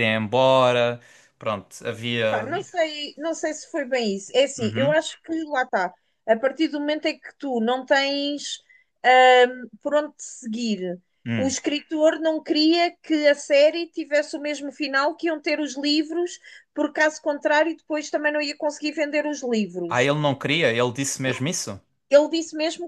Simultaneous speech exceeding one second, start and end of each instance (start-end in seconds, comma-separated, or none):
none